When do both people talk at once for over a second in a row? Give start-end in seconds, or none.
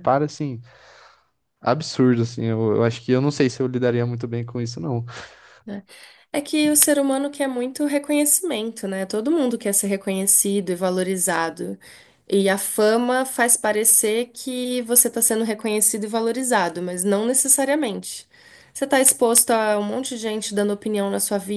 none